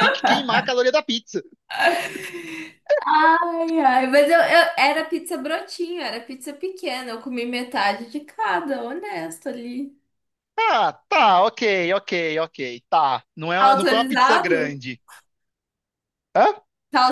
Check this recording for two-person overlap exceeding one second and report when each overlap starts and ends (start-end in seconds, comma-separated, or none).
13.6-14.8